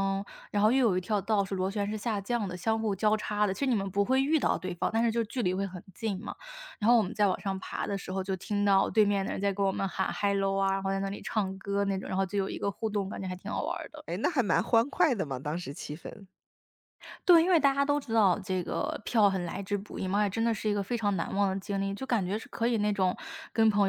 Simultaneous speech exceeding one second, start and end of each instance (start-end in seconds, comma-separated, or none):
none